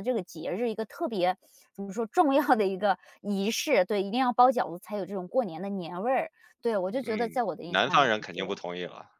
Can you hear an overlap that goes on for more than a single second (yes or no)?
yes